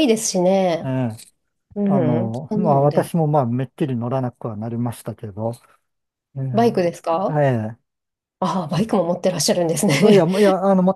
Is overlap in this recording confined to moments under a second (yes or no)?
no